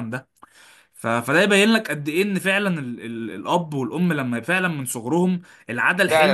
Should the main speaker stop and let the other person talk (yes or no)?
yes